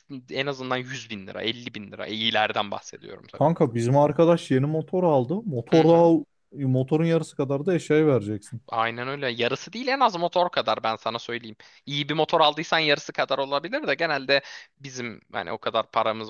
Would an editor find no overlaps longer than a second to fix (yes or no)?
yes